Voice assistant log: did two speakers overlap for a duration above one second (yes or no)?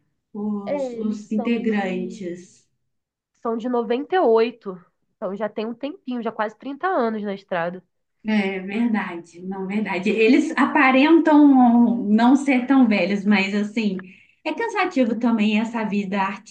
yes